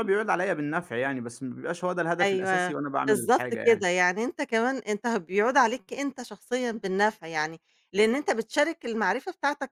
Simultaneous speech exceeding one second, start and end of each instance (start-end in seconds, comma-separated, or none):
2.2-3.9